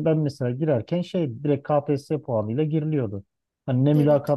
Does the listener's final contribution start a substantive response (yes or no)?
no